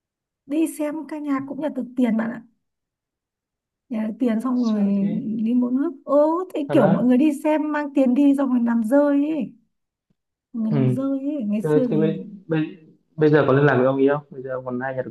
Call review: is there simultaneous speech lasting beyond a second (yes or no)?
no